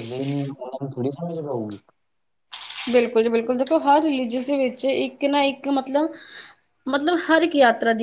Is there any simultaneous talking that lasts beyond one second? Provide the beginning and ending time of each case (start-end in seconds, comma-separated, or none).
none